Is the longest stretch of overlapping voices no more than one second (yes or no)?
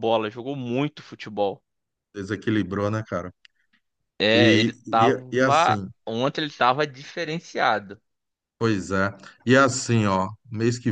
no